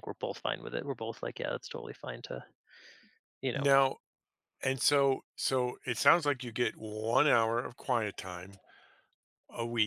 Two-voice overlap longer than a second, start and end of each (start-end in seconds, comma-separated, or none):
none